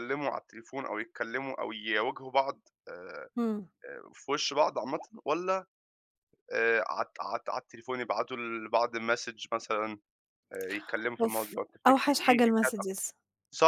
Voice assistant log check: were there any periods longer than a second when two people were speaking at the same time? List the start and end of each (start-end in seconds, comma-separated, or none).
11.2-12.9